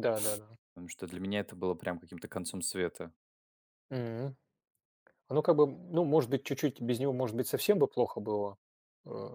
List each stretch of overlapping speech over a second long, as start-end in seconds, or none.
none